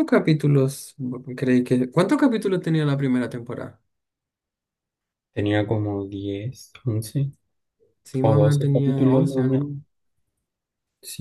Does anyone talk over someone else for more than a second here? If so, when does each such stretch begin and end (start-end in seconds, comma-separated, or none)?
8.2-9.7